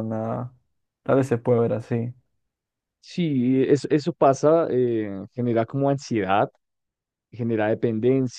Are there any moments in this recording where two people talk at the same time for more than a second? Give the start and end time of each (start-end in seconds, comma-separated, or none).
none